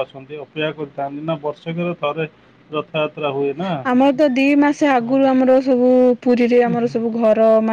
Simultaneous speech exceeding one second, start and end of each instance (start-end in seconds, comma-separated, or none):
none